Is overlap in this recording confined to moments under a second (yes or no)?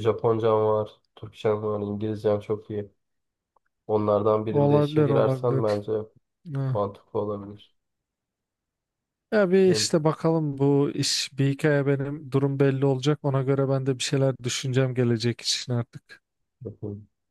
no